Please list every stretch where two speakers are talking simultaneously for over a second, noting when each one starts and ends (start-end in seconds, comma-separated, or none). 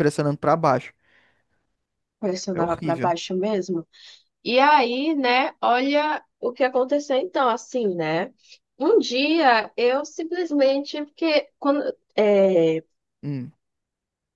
none